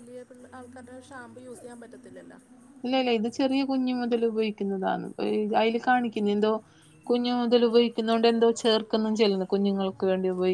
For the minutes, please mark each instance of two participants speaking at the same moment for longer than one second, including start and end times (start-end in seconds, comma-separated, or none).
none